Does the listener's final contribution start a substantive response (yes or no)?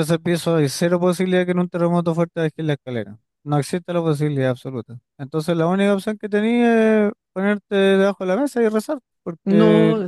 yes